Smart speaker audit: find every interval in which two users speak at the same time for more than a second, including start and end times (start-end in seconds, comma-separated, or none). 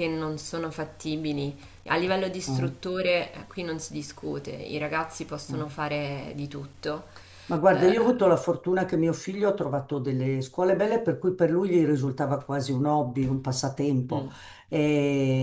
none